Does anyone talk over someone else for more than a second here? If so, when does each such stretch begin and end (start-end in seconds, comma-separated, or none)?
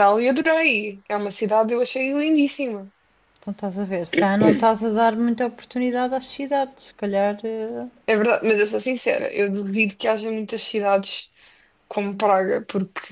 none